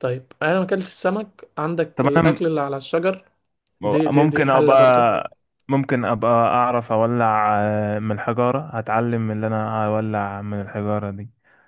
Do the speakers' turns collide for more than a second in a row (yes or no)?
yes